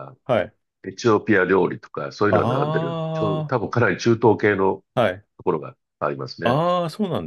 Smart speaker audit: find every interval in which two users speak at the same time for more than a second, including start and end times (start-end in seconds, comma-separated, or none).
2.3-3.6